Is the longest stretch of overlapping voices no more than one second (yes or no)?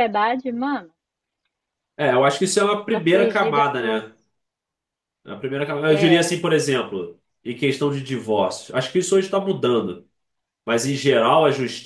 no